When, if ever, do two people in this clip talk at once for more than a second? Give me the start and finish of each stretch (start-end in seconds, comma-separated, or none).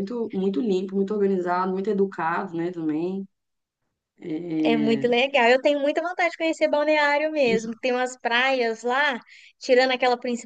none